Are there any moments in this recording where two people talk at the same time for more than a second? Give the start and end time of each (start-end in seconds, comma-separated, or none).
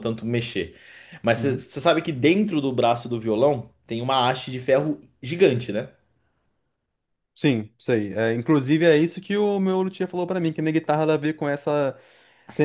none